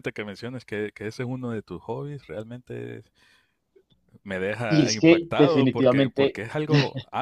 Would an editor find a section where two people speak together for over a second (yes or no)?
yes